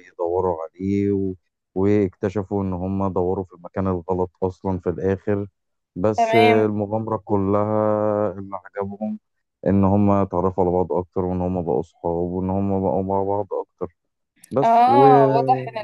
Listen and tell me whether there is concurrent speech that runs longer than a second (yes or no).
no